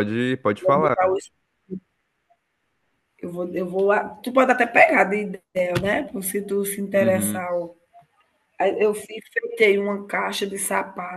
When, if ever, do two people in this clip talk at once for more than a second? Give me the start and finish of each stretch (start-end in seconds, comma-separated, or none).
none